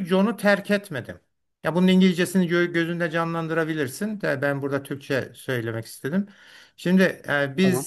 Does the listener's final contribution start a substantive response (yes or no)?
no